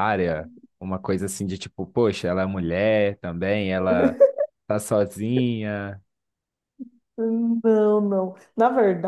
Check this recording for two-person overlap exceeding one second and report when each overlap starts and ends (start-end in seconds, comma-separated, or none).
none